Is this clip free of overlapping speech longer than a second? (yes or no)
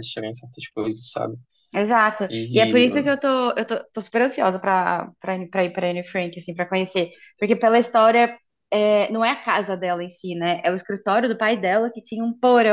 yes